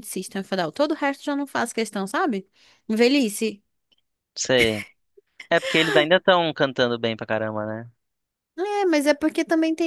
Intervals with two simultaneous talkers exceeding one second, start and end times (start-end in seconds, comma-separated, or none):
none